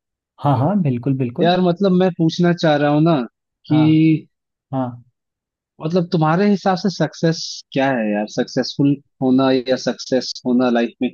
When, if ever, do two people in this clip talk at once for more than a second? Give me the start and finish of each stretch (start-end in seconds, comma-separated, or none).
none